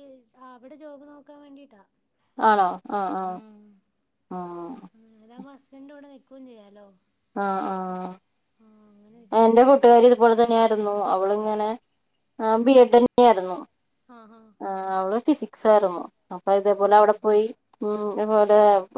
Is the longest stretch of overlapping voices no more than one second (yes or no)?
yes